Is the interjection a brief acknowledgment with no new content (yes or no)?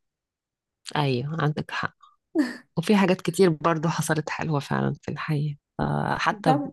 yes